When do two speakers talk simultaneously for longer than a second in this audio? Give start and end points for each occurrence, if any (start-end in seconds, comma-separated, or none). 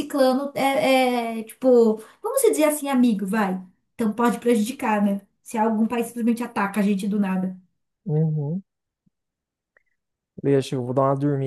none